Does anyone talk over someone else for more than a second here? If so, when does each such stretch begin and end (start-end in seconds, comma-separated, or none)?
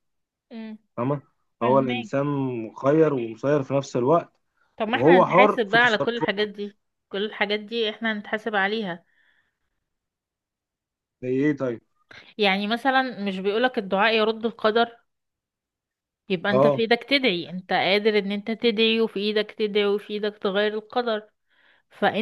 4.9-6.5